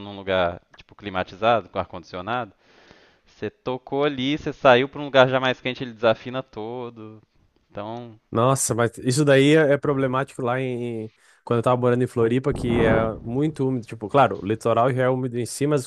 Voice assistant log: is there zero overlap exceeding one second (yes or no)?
yes